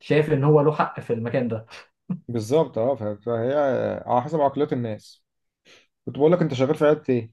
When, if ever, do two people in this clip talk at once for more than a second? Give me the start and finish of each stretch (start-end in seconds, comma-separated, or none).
none